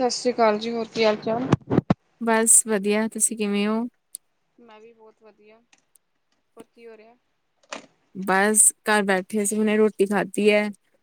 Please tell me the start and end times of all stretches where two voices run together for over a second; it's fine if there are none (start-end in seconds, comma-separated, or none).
none